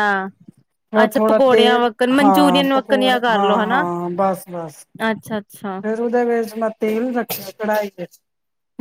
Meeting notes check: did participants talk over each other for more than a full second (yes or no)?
yes